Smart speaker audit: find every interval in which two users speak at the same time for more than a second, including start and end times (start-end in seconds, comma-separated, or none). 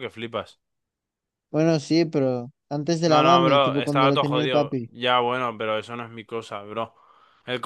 3.0-4.9